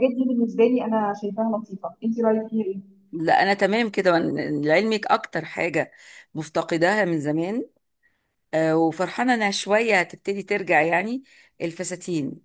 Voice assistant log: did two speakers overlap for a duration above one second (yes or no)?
no